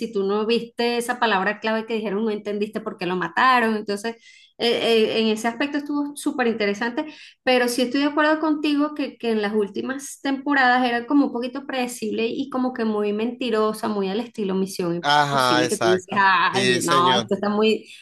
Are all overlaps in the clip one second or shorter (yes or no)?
no